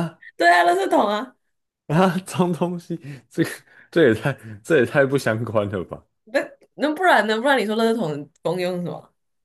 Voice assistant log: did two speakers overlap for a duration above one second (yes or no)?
no